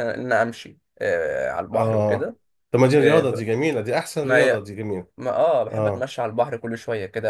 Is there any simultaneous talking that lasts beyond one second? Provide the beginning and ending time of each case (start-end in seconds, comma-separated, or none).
none